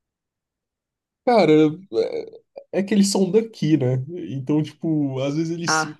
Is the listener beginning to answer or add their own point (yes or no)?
no